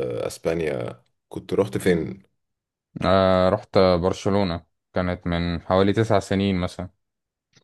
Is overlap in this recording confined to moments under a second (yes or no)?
yes